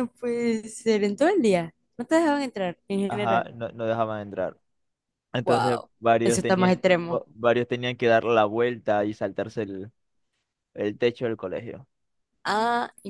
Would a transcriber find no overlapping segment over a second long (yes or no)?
no